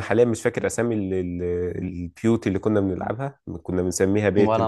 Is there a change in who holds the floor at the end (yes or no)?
no